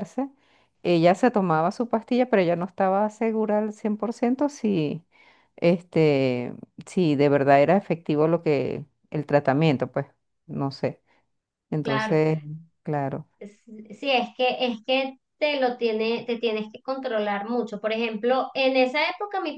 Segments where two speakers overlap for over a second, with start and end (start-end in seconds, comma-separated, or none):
none